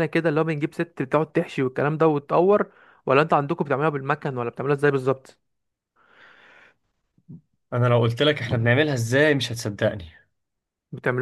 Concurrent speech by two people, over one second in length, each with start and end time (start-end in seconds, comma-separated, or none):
none